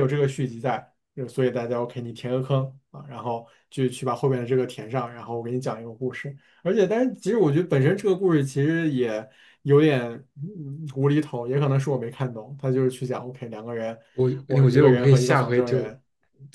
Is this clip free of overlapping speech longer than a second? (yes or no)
no